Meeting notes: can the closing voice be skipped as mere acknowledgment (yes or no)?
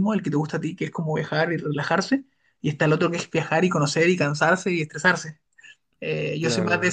yes